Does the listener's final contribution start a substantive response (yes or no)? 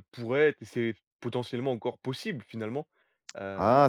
yes